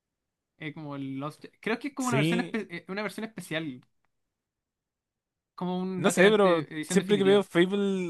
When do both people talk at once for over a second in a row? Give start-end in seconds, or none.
6.0-7.5